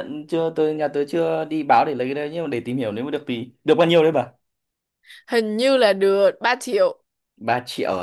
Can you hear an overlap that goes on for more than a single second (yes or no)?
no